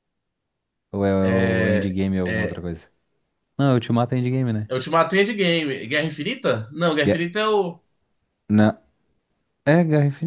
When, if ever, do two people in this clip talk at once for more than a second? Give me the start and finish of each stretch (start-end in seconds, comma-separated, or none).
1.2-2.6